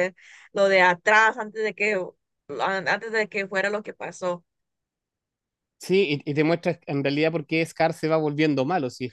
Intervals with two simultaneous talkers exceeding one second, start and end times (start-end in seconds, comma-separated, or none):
none